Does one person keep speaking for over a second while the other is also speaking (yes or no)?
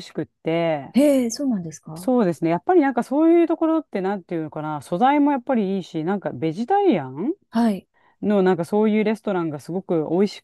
no